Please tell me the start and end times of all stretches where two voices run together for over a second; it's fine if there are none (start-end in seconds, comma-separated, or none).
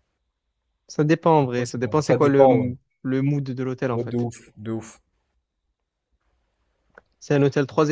1.4-2.7